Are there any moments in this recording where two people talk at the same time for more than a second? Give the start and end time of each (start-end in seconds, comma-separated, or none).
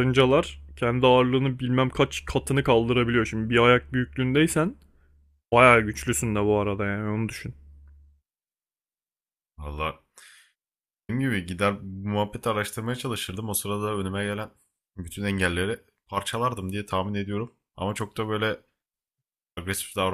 none